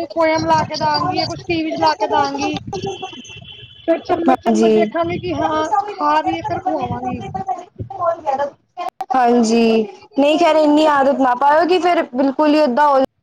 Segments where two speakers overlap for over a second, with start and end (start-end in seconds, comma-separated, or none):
9.4-11.3